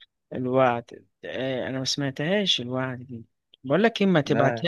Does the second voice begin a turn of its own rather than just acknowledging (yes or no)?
no